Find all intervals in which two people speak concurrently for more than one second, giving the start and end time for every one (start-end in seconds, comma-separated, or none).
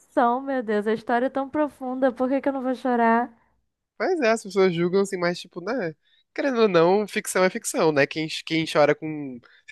none